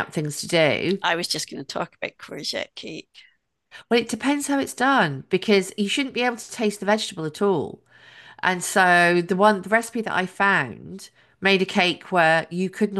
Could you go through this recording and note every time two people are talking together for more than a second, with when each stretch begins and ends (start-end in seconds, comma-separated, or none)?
none